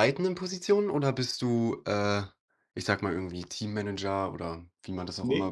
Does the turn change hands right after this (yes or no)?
yes